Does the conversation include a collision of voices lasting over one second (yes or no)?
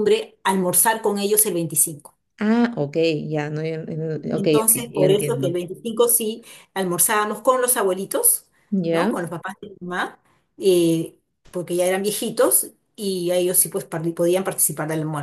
yes